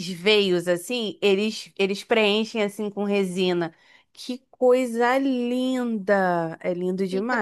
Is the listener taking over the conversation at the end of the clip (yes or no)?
yes